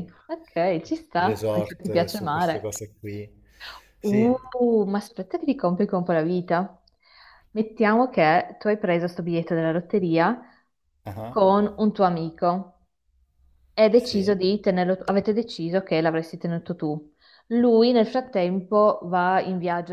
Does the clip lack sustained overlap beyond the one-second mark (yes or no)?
no